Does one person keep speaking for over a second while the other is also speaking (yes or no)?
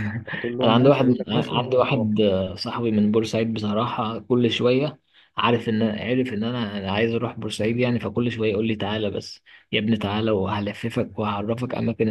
yes